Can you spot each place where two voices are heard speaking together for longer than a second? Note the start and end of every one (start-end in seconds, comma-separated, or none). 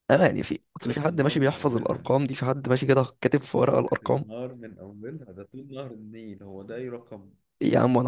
0.8-2.1